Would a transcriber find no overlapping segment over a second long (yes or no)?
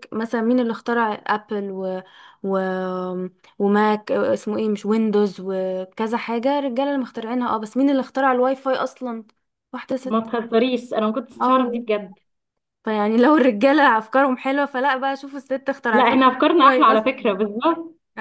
no